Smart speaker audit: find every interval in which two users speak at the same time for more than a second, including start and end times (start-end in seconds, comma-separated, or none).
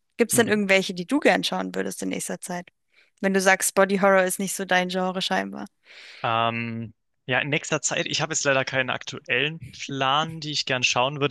none